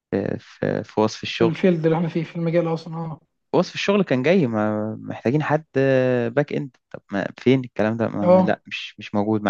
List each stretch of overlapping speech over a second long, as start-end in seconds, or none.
none